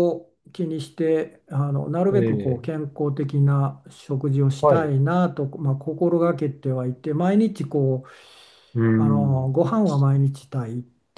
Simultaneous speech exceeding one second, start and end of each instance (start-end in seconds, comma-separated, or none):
none